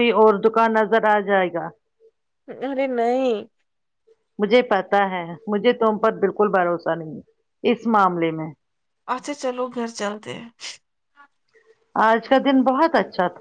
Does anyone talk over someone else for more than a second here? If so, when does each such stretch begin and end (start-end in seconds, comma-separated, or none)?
none